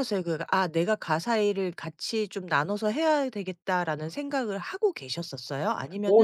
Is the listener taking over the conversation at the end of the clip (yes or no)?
yes